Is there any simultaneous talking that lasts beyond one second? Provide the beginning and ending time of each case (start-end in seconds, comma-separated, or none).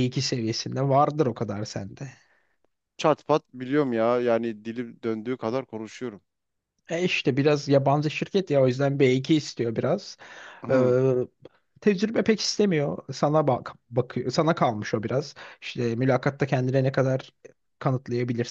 none